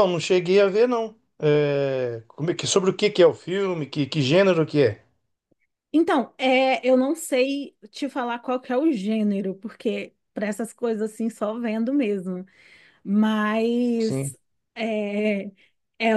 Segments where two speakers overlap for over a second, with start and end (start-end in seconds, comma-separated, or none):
none